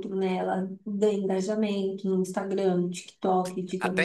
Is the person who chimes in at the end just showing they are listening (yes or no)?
yes